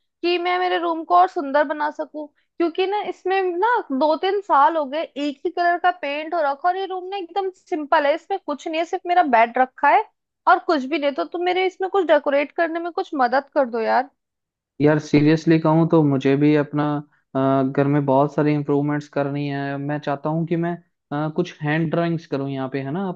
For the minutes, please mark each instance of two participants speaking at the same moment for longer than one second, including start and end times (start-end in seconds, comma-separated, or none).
none